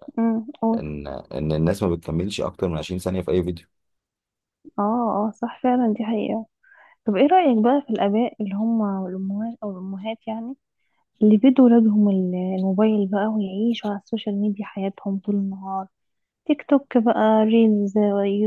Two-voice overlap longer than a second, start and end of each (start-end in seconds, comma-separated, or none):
none